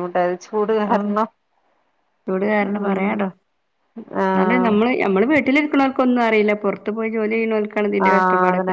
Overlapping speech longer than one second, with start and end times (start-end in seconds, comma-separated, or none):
none